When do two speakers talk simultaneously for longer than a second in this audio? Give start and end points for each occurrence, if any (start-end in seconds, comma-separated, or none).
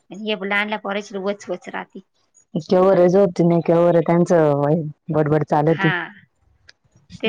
none